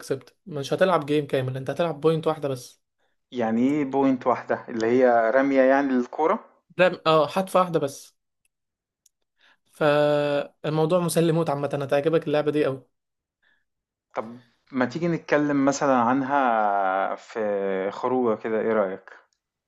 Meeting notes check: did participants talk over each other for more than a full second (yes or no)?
no